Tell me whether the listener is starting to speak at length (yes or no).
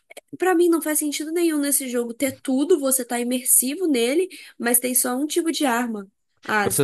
yes